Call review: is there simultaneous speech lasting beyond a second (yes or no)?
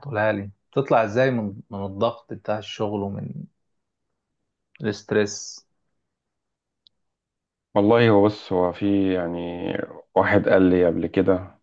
no